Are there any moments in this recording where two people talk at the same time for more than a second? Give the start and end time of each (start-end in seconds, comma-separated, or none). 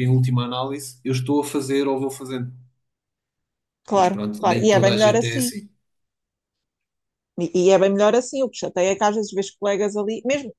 3.9-5.5